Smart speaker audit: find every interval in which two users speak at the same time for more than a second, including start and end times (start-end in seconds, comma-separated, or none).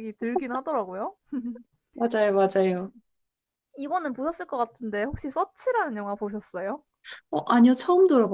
none